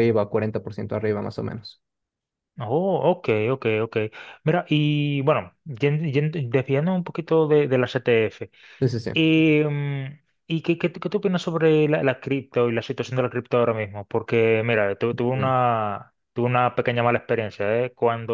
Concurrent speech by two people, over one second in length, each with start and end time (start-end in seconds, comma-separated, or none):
none